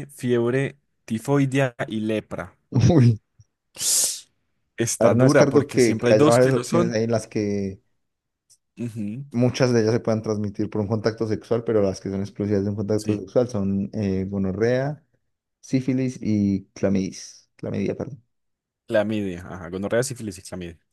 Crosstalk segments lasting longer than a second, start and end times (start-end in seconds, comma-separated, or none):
5.0-6.9